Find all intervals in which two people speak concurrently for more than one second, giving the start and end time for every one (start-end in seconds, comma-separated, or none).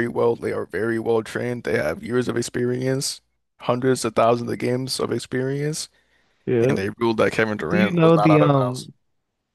7.7-8.9